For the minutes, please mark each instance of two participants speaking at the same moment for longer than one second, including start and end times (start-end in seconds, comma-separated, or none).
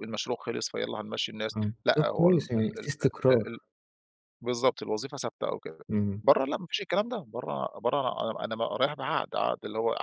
1.6-3.5